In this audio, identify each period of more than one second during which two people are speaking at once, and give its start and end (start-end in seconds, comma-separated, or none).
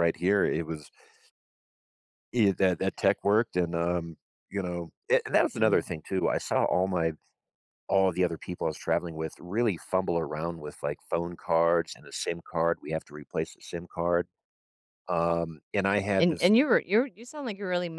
none